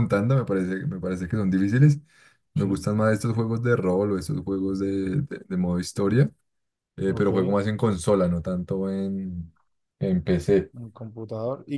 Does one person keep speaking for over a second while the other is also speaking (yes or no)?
no